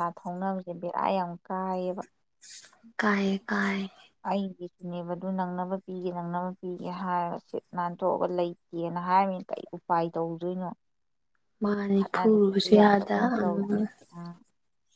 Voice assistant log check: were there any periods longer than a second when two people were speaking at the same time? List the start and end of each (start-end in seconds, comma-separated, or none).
12.0-13.6